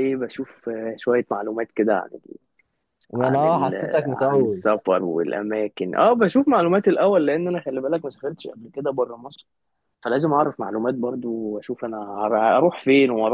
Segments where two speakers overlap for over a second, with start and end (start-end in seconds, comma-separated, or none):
3.2-4.6